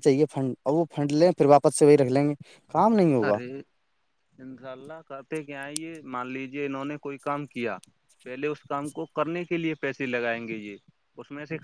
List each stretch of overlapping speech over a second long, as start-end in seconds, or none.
none